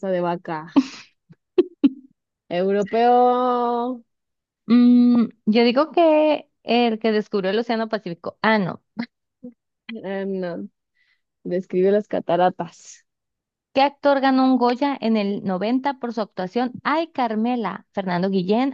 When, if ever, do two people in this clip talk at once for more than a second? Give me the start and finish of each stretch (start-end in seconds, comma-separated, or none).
none